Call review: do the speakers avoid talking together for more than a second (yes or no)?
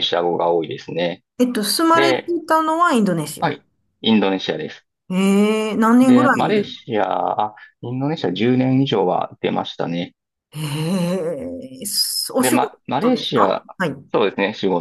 no